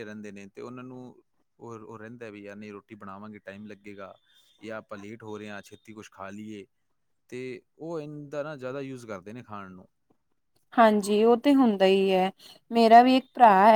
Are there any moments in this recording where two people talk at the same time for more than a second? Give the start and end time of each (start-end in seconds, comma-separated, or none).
none